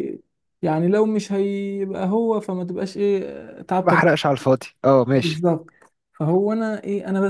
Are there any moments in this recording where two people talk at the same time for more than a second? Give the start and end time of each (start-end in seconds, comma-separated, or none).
none